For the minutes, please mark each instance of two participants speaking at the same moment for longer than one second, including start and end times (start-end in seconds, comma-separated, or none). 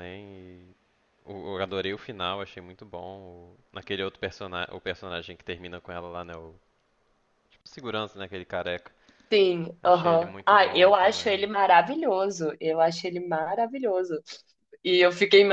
9.8-11.5